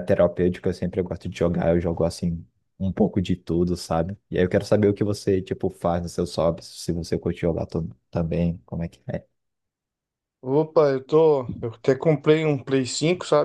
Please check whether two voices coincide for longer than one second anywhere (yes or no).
no